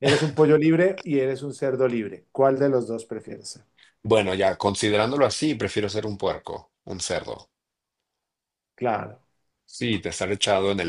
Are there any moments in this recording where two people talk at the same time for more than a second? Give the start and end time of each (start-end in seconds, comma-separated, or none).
none